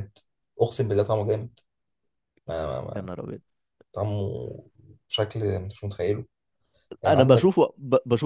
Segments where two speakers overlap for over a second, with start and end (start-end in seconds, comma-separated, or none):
none